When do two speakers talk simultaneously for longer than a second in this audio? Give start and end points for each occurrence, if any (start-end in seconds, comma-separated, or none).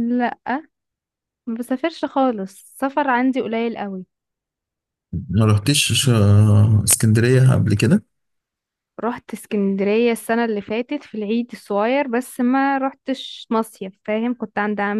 none